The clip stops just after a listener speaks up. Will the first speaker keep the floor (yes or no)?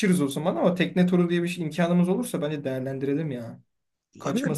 no